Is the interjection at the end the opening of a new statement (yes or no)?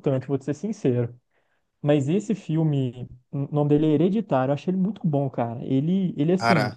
no